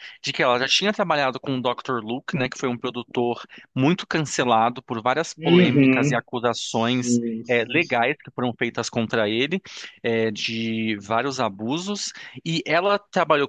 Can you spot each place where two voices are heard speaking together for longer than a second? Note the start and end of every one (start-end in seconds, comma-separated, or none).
5.4-8.1